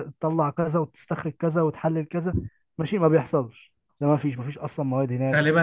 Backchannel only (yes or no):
no